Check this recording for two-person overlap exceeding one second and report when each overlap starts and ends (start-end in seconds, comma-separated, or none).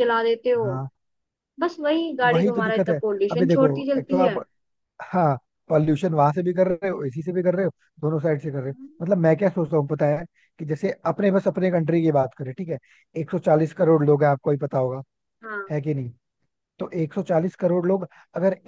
2.3-4.3